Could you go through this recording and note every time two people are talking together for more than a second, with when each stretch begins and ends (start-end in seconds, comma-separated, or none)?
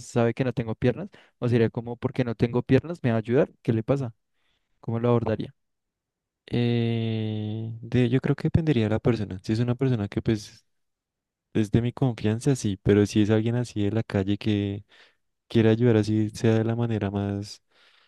none